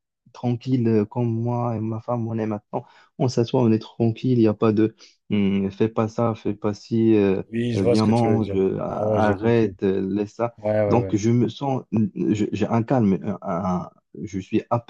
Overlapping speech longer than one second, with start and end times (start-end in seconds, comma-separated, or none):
7.5-9.8